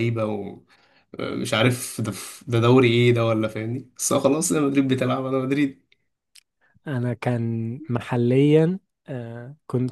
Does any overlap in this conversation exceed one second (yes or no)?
no